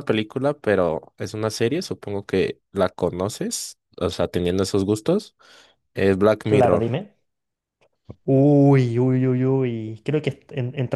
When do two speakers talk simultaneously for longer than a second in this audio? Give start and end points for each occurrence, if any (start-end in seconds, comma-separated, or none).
none